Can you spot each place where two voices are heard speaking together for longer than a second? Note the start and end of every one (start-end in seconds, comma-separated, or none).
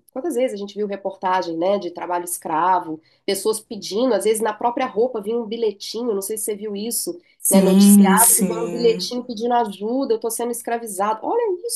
7.5-9.1